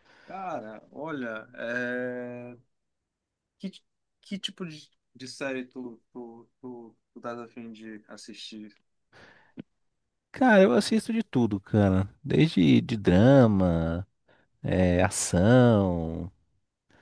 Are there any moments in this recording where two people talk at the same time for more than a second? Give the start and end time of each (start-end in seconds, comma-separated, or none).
none